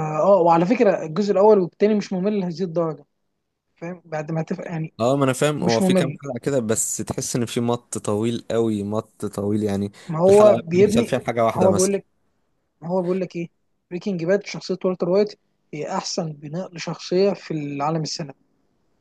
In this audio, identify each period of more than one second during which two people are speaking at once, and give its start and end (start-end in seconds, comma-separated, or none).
10.3-12.0